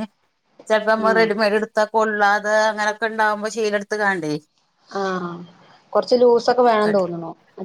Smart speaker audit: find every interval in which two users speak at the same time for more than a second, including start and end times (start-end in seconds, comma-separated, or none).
none